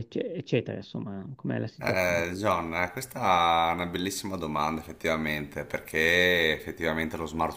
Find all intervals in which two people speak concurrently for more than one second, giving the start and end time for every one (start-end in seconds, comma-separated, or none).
none